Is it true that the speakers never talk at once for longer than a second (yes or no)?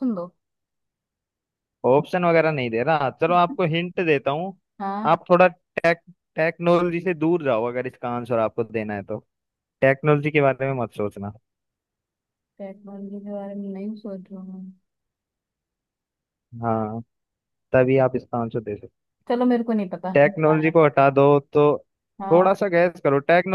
yes